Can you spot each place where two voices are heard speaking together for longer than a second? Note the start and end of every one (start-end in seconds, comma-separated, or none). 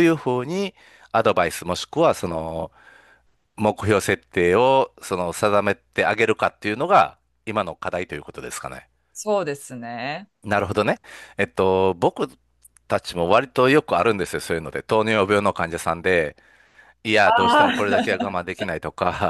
17.2-18.4